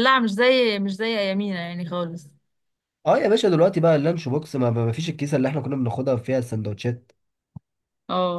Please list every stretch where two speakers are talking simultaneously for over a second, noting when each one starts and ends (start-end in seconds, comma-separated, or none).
none